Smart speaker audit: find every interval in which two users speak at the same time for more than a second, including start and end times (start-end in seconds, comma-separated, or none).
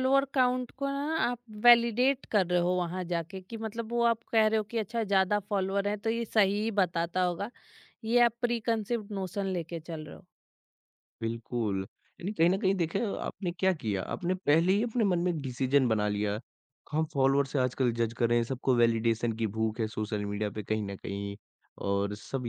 none